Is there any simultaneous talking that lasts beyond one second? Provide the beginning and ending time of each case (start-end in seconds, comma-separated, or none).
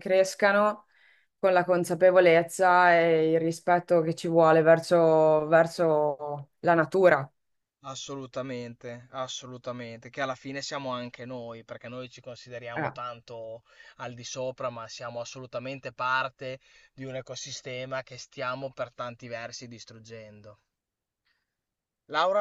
none